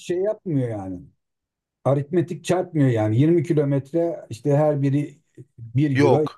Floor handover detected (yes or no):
yes